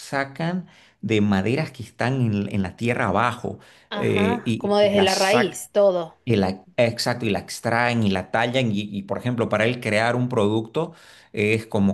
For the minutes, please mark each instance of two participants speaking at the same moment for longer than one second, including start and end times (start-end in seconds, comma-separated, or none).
3.9-5.6